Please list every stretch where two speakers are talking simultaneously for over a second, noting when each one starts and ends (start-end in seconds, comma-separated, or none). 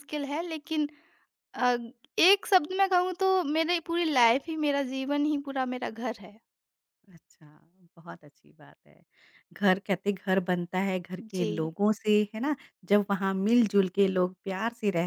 none